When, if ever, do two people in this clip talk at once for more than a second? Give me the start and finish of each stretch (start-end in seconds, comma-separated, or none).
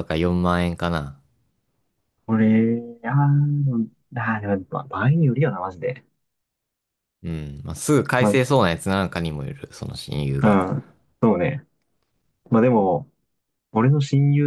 none